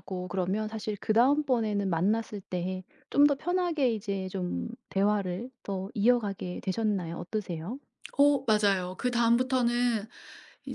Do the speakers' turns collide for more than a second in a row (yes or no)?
no